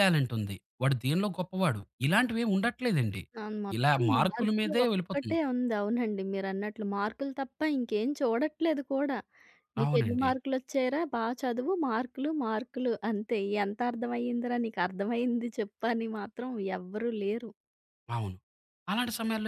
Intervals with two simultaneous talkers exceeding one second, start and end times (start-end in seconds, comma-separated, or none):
3.8-5.4